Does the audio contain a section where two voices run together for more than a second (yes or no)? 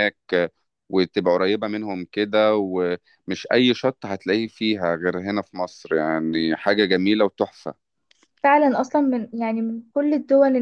no